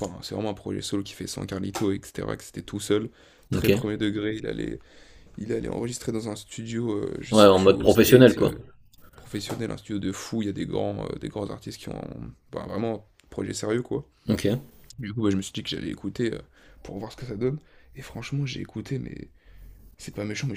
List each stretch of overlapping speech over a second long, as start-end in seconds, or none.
7.3-8.5